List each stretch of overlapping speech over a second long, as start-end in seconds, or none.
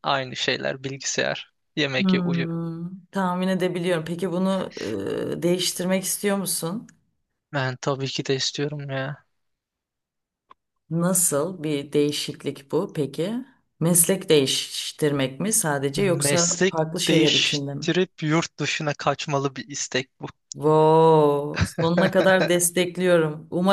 15.9-17.9